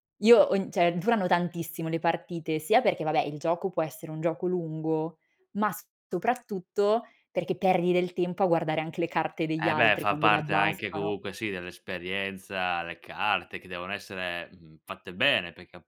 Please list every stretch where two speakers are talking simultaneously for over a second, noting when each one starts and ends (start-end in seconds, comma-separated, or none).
9.6-11.1